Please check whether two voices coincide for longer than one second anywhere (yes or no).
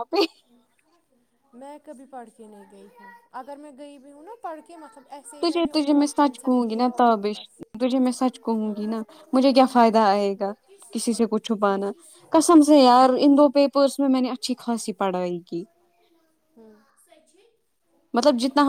yes